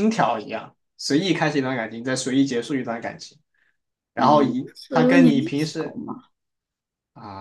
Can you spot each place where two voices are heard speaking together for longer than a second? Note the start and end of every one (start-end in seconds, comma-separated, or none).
4.2-6.0